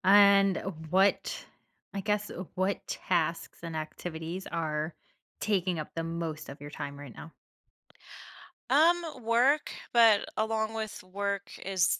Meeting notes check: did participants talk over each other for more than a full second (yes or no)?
no